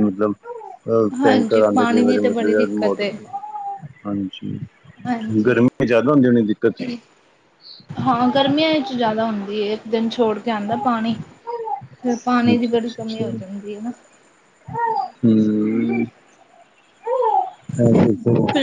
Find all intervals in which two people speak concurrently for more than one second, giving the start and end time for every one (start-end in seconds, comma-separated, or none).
1.2-3.2